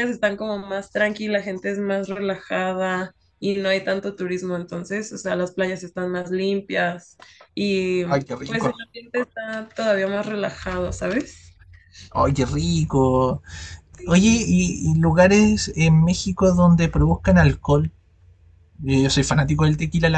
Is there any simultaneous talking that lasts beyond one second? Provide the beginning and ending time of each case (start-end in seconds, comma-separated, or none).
none